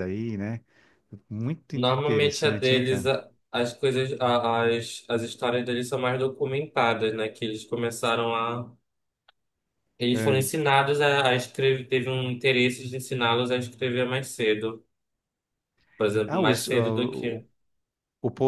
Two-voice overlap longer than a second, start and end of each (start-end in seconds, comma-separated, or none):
1.8-3.1